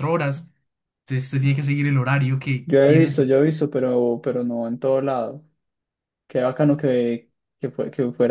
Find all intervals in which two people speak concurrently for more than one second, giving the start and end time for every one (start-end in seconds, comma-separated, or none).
none